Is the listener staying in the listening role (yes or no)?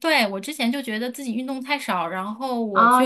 no